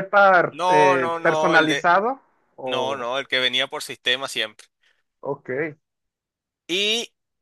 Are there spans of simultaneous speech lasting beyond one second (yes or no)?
yes